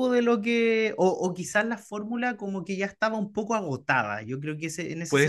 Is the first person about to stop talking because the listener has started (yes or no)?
no